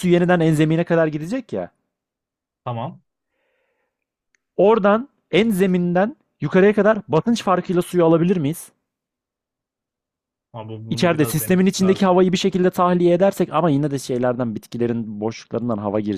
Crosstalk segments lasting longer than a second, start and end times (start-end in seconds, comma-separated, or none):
10.9-12.2